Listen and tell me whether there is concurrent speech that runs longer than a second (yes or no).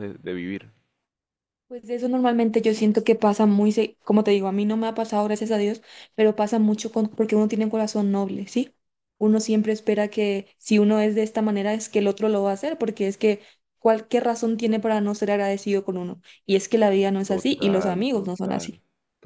yes